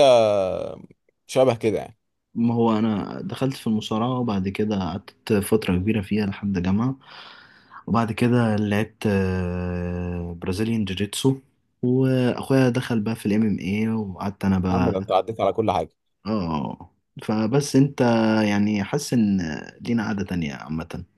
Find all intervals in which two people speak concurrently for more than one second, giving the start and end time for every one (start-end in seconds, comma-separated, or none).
none